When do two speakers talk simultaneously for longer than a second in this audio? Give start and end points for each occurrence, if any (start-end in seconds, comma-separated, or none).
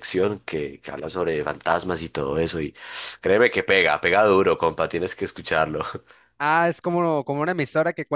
none